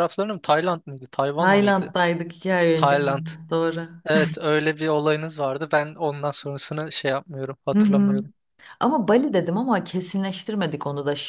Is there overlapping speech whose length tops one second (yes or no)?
no